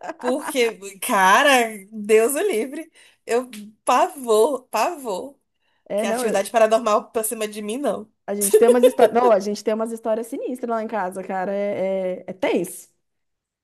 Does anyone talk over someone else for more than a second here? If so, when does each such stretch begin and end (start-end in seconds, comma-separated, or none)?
none